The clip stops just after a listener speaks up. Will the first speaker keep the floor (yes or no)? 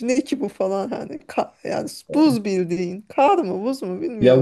no